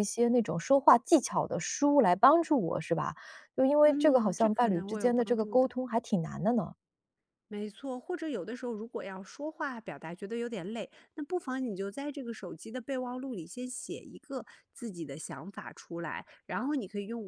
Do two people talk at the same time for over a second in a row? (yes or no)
yes